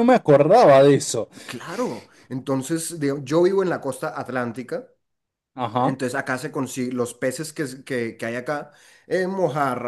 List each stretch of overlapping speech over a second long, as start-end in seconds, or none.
none